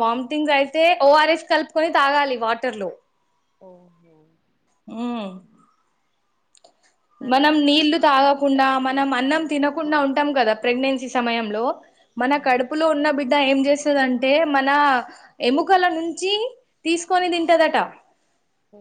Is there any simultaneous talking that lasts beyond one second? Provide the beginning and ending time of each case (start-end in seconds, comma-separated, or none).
7.3-9.7